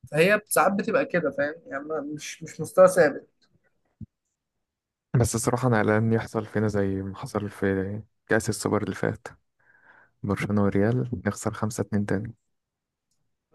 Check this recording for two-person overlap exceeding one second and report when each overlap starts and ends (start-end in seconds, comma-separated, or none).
none